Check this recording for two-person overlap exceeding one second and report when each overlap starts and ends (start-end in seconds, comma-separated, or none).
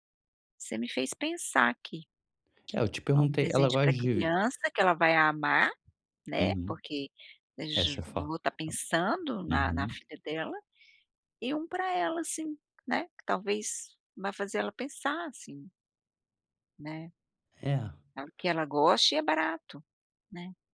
3.2-4.4